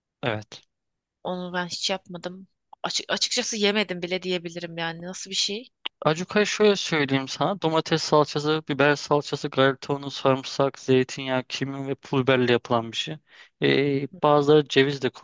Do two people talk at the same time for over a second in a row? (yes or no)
no